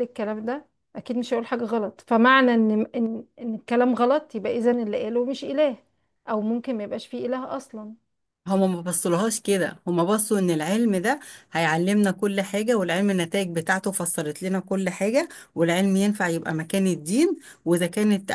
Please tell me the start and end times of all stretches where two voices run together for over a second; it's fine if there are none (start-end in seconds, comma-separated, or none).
none